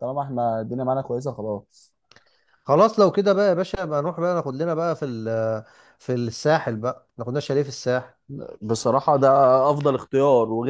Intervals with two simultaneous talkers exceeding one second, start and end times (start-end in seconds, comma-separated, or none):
none